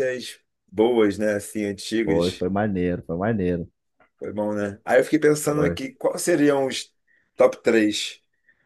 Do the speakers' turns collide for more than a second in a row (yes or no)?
no